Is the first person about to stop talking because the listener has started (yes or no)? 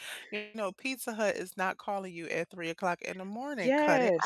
yes